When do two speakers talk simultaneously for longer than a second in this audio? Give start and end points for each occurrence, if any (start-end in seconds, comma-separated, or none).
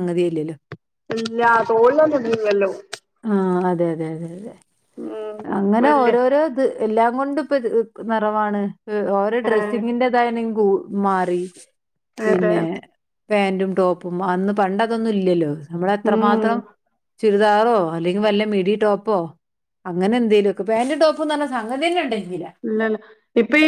none